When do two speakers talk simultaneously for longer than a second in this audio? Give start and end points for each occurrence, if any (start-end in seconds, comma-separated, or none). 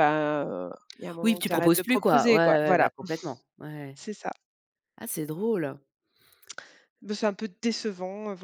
1.2-2.9